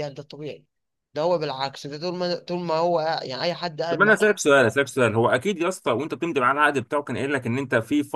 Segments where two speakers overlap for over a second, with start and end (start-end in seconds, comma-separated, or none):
none